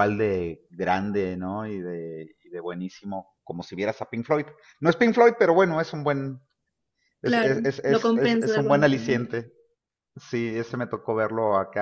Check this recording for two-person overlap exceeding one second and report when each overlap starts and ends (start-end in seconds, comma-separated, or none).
7.2-9.3